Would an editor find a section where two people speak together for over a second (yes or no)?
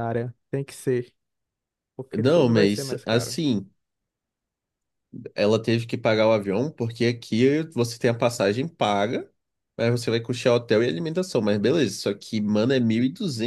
yes